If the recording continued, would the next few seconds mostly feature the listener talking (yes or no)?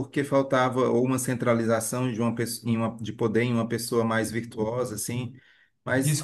yes